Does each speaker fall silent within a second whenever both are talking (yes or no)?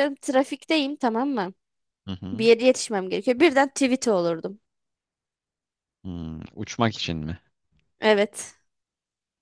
yes